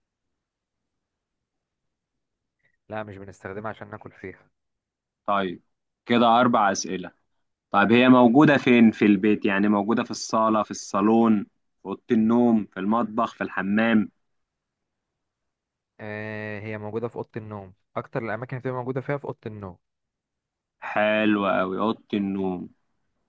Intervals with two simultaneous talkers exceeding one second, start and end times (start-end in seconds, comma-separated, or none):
none